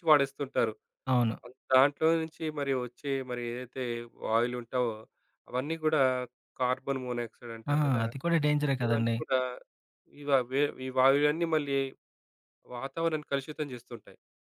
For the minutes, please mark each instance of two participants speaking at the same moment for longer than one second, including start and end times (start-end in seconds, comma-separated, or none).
none